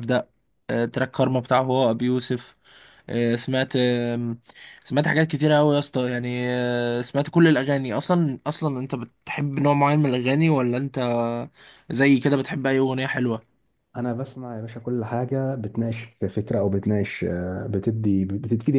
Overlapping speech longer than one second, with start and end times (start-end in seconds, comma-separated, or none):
none